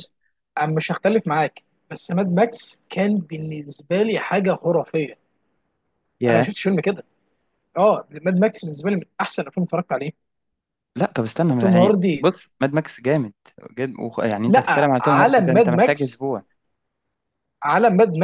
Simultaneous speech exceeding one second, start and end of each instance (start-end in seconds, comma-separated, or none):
14.5-16.2